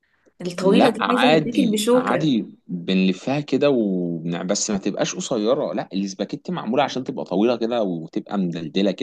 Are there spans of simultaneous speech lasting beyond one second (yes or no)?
yes